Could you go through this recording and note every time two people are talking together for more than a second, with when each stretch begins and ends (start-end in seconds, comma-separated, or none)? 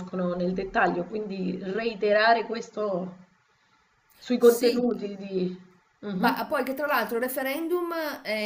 none